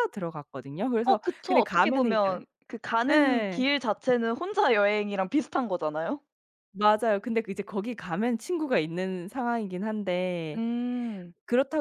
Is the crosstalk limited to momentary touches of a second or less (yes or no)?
no